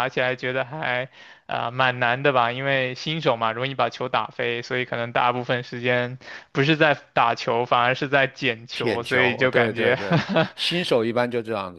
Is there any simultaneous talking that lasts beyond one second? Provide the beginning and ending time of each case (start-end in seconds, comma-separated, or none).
8.7-10.0